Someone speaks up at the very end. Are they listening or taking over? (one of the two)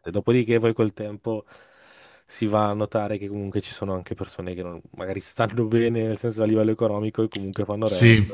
listening